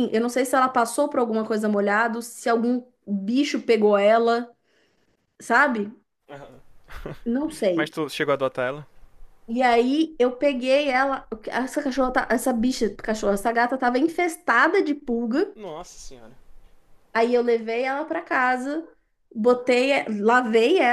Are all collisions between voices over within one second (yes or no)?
yes